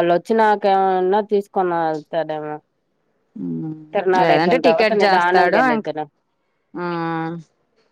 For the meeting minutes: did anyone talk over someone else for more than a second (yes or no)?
yes